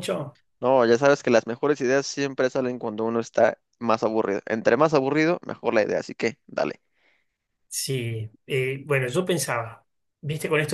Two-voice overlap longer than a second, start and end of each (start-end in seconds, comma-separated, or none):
none